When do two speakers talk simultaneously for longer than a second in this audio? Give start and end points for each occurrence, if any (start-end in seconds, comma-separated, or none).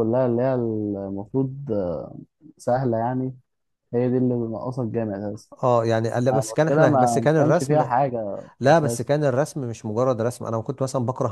6.3-7.9